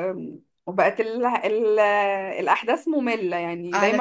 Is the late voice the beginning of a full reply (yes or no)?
yes